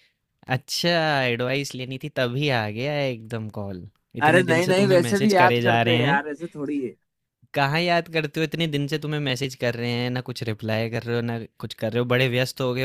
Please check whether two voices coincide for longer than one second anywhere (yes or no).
yes